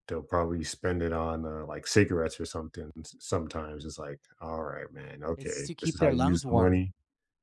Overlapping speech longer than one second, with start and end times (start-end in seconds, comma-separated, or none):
5.4-6.9